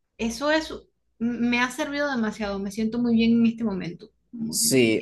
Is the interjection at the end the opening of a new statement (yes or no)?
yes